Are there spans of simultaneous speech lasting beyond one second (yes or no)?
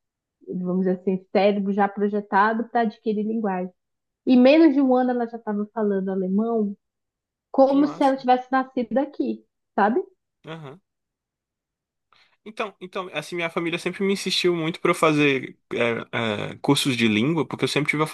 no